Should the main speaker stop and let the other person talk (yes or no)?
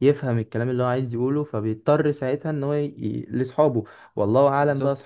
no